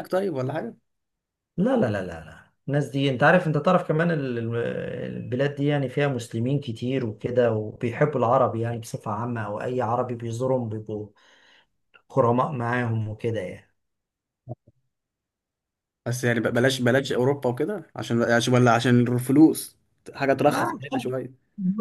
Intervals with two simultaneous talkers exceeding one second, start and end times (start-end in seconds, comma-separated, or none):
none